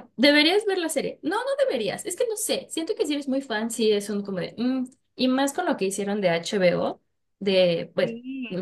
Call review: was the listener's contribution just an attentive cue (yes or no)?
yes